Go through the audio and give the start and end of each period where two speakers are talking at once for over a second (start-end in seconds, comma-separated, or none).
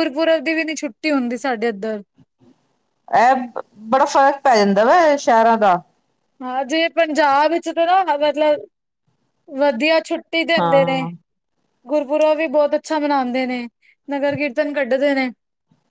none